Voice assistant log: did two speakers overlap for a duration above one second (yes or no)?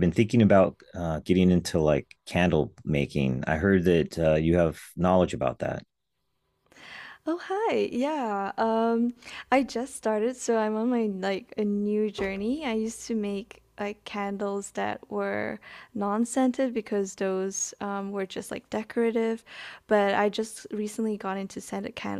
no